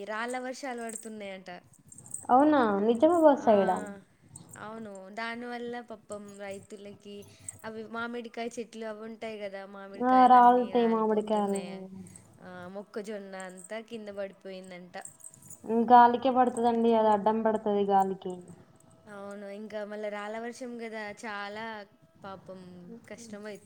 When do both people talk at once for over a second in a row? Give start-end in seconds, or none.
10.1-11.8